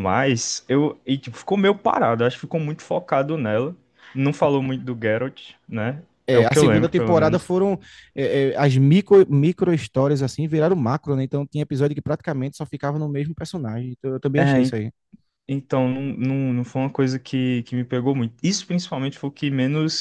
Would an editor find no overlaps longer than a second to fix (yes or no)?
no